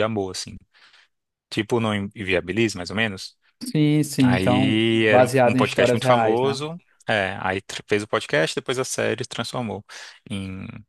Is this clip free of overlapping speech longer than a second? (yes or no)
no